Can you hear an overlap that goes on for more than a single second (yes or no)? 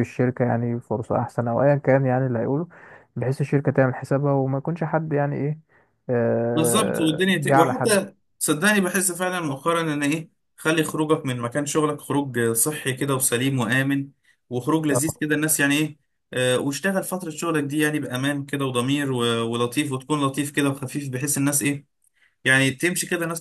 yes